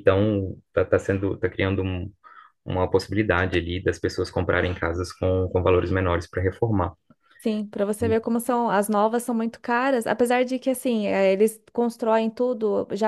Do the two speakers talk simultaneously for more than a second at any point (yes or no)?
no